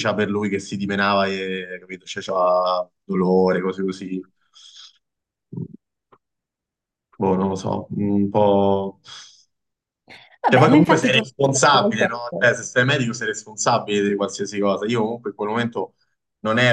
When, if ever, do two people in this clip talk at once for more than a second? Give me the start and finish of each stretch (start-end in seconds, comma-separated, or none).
10.5-12.5